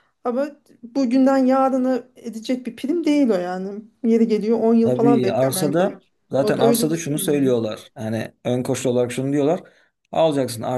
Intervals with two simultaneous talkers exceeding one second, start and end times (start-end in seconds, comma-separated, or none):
4.8-7.5